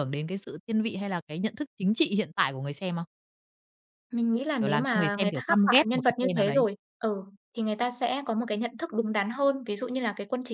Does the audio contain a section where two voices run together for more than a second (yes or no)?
yes